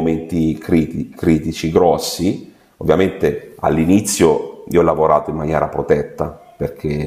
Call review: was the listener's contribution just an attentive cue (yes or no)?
no